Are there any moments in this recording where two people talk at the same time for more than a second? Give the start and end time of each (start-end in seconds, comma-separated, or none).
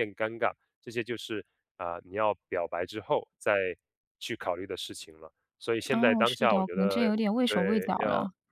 5.9-7.9